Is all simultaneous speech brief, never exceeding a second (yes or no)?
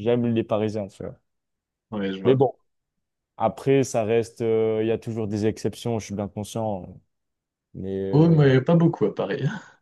yes